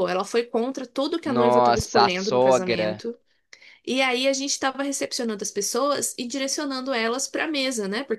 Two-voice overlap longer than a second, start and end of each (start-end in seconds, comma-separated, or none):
1.2-3.0